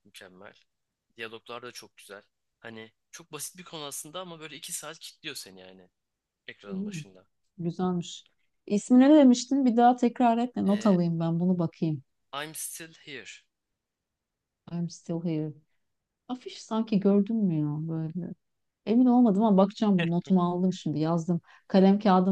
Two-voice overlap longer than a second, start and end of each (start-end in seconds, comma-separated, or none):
none